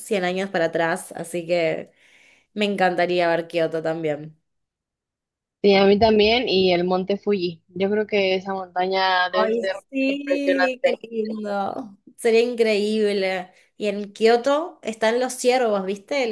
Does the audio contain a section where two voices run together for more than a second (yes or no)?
yes